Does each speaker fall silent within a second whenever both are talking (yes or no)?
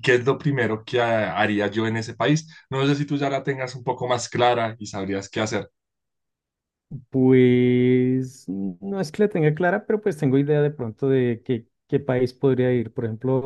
yes